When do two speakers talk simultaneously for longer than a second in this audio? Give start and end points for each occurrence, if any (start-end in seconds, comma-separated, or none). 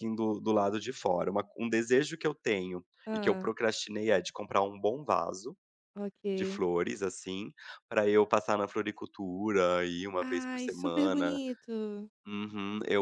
10.2-11.4